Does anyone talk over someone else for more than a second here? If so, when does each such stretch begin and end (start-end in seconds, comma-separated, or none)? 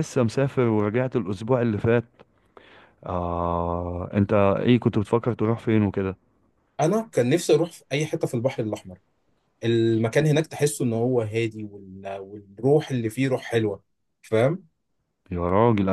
none